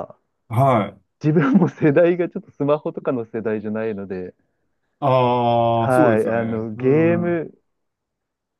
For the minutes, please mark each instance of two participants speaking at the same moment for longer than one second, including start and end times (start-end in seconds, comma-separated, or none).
5.8-7.5